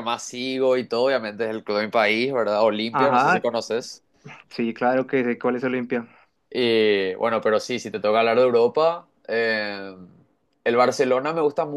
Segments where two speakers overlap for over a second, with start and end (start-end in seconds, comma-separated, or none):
none